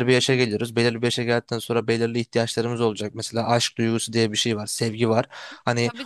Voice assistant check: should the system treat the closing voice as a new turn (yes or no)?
yes